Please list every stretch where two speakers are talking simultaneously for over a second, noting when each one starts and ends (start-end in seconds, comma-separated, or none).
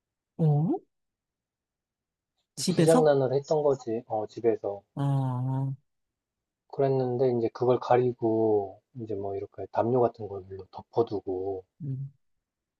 none